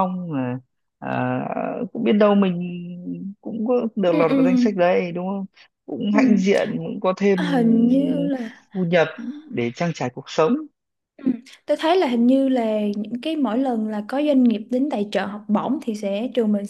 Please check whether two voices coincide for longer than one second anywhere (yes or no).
no